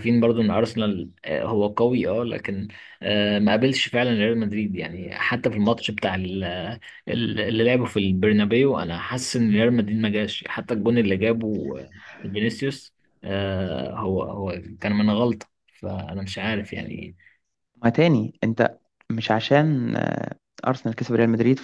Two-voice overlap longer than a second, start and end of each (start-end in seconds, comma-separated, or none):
none